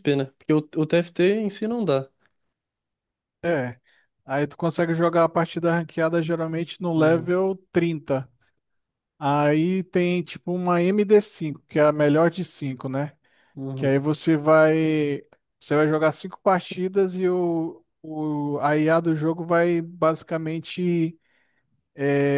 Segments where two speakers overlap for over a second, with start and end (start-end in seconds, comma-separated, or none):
none